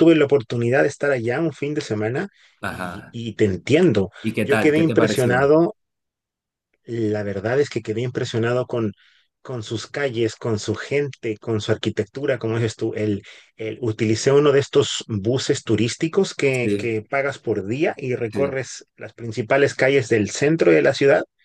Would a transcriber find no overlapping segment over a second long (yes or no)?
no